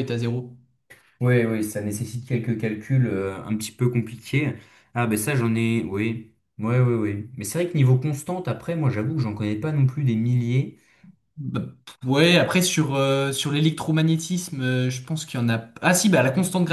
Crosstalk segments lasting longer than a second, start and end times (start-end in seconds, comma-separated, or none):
none